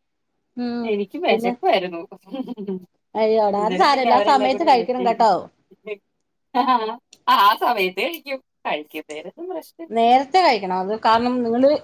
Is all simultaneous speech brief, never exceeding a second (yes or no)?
no